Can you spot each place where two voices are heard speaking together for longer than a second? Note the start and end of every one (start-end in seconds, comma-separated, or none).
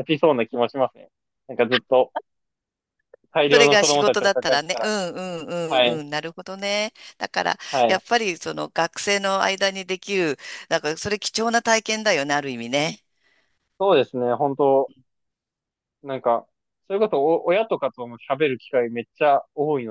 3.5-4.9